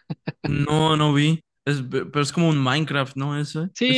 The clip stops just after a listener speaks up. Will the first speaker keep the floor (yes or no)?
no